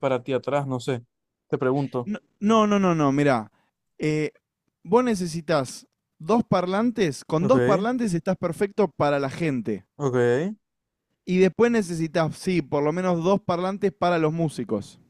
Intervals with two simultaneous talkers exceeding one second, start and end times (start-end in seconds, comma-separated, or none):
none